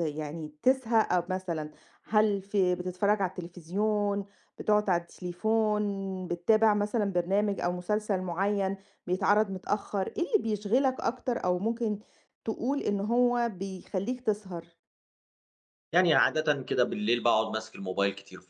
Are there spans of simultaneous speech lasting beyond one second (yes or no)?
no